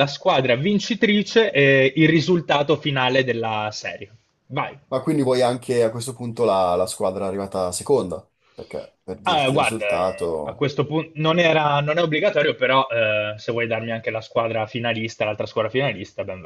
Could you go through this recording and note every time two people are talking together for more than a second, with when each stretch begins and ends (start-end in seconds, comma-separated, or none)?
9.2-10.7